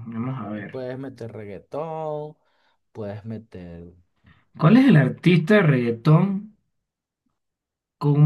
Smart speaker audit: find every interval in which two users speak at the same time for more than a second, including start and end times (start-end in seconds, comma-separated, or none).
none